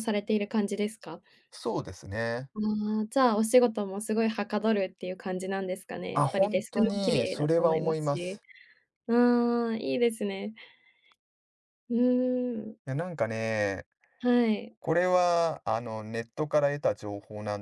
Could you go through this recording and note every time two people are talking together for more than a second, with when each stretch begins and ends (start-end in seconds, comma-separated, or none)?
6.1-8.4